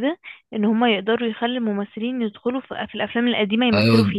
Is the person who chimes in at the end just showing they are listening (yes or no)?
no